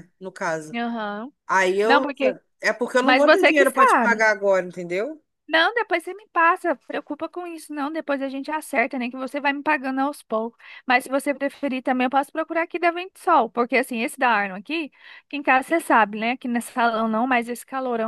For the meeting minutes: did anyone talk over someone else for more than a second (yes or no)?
yes